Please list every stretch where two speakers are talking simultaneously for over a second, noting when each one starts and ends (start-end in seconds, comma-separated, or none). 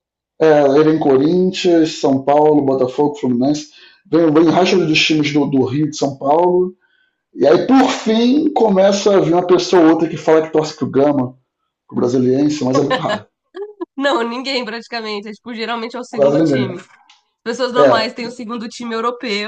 none